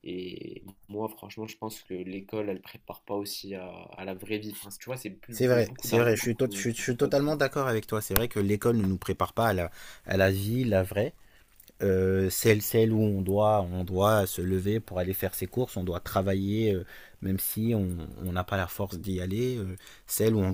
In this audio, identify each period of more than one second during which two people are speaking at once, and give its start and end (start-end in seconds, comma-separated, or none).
5.3-7.4